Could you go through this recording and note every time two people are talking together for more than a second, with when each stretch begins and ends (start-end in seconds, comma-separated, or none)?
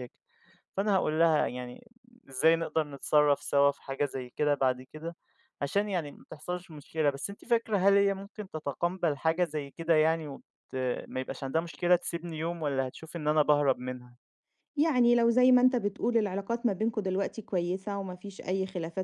none